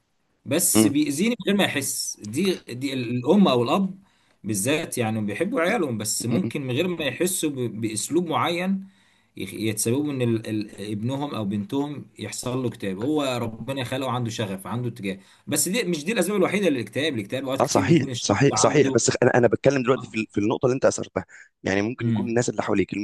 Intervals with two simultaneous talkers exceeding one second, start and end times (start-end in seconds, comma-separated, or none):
17.6-19.0